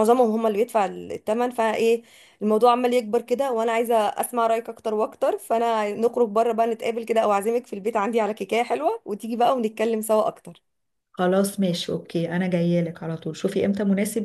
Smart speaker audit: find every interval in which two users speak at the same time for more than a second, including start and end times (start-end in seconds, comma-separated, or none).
none